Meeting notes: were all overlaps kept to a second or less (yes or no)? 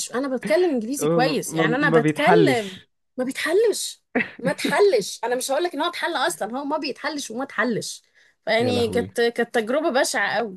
no